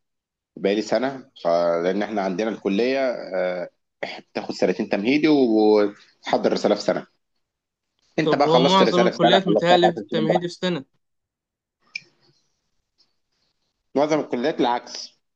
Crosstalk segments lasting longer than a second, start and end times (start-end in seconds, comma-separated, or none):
8.2-10.5